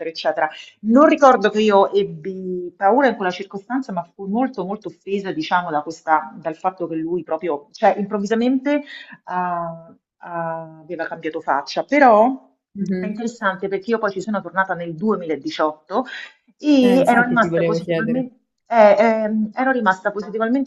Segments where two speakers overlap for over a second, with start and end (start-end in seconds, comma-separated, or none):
16.8-18.2